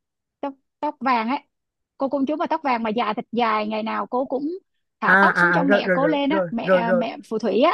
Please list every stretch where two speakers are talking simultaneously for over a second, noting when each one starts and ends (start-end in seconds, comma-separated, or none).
5.1-7.1